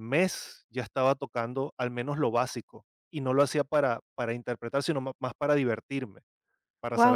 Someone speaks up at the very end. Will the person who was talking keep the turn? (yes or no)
no